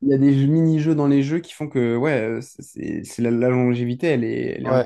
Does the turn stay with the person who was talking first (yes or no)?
no